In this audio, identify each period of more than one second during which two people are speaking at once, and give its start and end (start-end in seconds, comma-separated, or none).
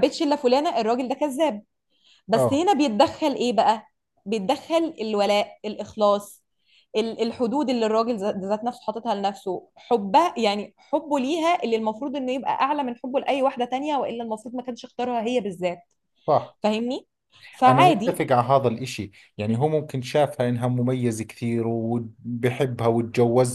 none